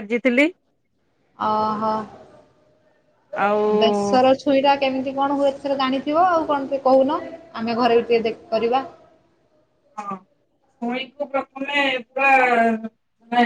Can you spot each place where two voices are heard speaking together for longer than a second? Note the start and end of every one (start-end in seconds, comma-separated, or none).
none